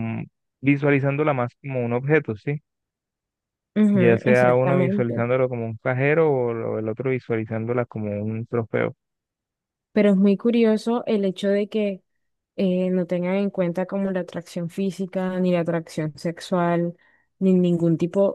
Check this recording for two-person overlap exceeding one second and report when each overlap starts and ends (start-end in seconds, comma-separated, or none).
3.9-5.2